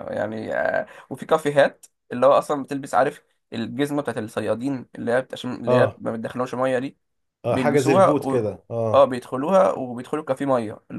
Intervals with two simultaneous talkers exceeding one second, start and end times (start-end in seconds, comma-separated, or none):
7.5-9.1